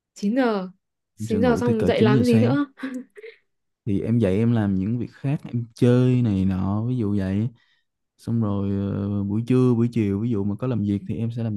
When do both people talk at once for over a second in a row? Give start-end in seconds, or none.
1.2-2.6